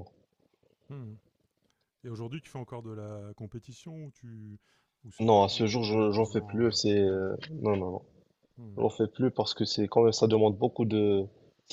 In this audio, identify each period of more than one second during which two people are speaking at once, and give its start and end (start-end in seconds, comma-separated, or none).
5.2-7.4